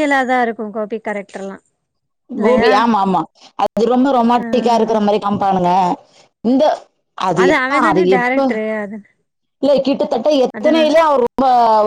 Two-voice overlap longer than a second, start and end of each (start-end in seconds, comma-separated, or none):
none